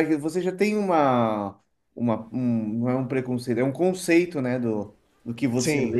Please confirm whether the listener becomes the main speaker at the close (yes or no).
no